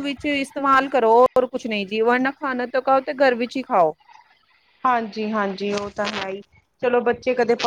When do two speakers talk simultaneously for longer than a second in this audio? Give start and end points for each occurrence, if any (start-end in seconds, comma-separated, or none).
none